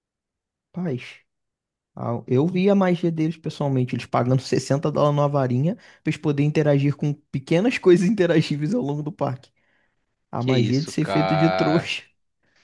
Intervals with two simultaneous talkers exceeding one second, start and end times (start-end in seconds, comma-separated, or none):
10.4-11.9